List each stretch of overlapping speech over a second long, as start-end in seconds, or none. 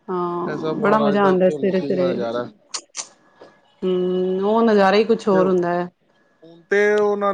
0.5-2.1